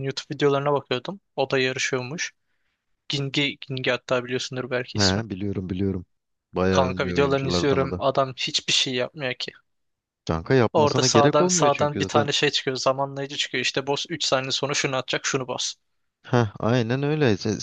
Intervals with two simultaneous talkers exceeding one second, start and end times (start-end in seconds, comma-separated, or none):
6.7-8.0, 10.7-12.3